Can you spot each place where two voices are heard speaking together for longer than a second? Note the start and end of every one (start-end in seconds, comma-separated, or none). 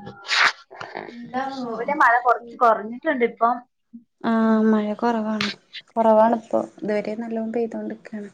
none